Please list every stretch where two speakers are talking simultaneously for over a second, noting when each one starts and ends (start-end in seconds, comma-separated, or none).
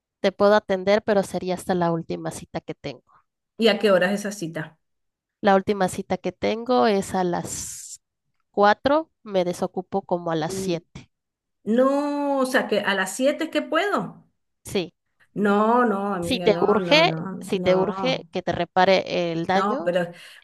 16.2-18.3